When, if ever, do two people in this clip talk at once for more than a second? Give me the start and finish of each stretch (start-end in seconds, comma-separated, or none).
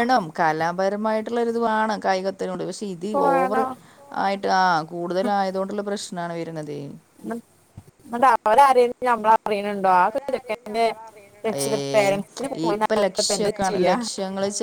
none